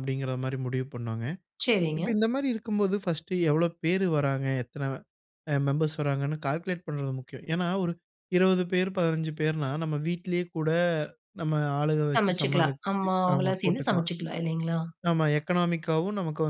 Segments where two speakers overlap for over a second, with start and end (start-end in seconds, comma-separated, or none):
12.2-14.1